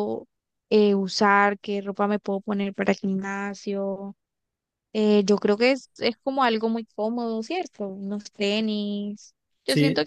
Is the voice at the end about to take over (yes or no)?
no